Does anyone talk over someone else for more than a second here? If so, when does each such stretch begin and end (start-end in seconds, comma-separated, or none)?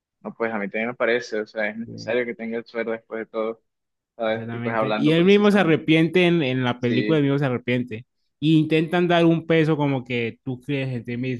4.2-5.8